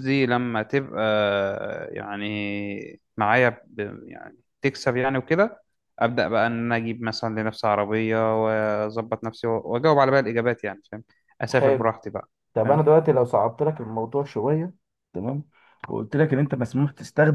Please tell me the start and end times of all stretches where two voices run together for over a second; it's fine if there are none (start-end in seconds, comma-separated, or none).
none